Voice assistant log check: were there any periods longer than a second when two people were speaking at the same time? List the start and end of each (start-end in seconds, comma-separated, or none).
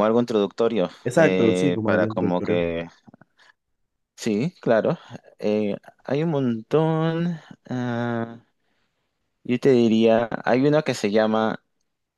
1.0-2.6